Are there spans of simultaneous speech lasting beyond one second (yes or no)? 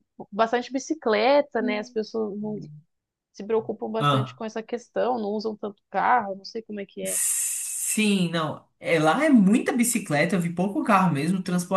no